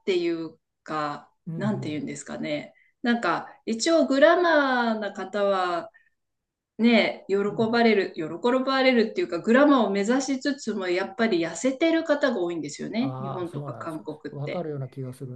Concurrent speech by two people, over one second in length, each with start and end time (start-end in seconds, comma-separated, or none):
13.0-14.7